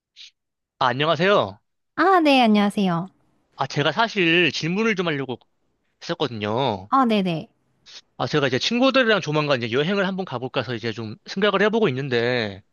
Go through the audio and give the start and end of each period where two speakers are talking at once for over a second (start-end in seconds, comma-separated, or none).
none